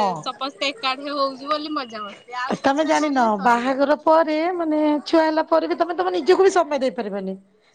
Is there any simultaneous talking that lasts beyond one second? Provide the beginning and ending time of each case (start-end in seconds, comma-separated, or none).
none